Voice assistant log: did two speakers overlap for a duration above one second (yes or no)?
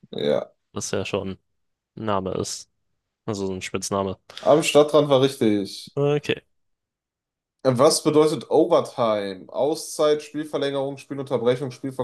no